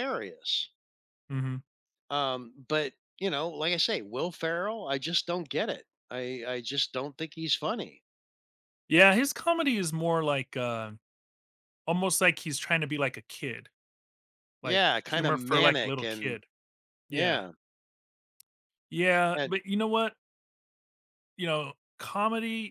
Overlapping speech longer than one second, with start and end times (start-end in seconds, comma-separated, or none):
14.6-16.4